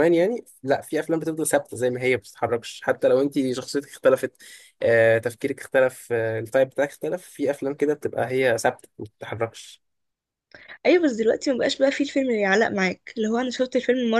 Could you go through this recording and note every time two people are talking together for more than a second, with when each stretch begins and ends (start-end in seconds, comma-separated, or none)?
none